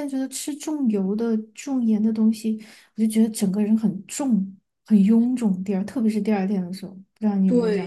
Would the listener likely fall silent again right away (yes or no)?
no